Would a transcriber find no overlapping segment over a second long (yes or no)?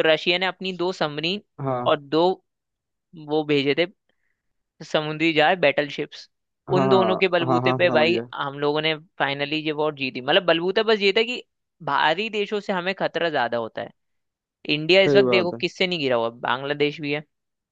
no